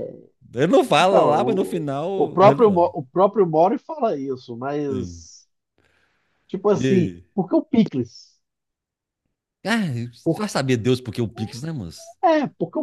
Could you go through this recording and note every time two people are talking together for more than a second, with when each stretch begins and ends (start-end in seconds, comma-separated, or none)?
1.0-2.9